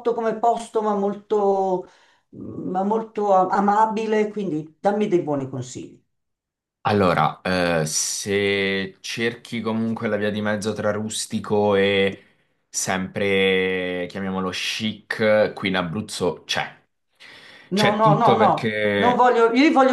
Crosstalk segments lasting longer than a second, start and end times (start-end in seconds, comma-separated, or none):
17.8-19.3